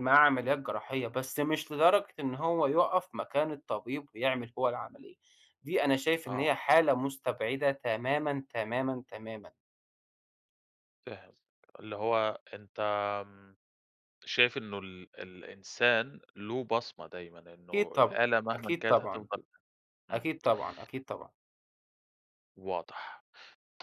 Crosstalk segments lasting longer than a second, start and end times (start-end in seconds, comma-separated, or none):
17.7-19.2